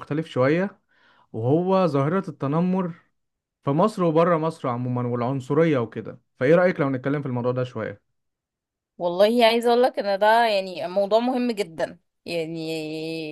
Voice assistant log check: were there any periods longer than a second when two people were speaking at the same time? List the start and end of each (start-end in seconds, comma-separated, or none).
none